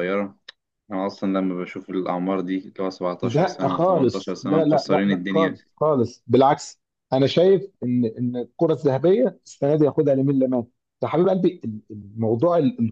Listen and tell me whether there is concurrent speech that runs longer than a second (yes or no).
yes